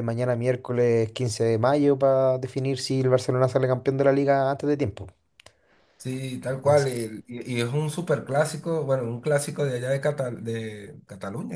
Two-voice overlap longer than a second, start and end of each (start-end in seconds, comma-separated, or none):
none